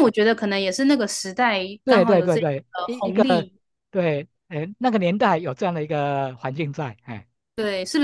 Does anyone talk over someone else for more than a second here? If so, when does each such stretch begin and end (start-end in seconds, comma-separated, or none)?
1.8-3.5